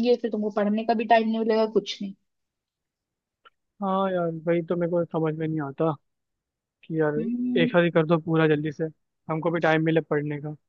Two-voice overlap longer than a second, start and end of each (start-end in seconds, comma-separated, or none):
none